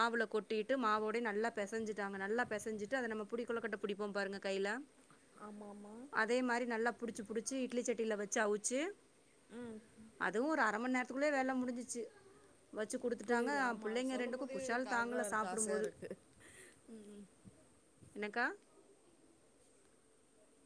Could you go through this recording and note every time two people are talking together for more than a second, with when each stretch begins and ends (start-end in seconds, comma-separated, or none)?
13.3-15.9